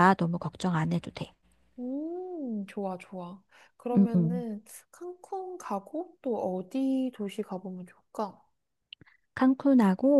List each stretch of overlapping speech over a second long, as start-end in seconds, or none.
none